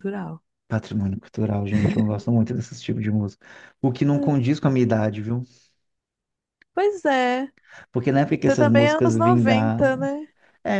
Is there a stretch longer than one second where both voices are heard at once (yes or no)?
yes